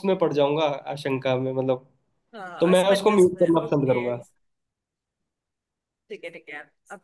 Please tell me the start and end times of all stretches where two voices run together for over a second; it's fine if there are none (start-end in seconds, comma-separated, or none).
2.6-4.0